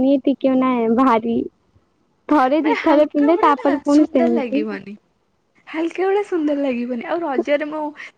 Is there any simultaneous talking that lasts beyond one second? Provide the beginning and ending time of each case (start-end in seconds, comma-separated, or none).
2.6-4.6